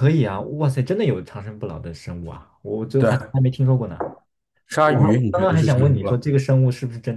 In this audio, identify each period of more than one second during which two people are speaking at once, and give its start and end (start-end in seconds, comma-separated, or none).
4.8-6.1